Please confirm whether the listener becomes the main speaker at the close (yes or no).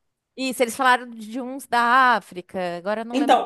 yes